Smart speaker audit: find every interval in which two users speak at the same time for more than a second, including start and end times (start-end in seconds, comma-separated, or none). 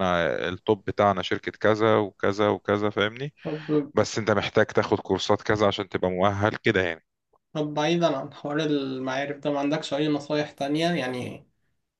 none